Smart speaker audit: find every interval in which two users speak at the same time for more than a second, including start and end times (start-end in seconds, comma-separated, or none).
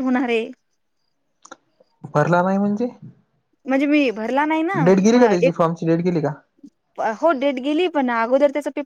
none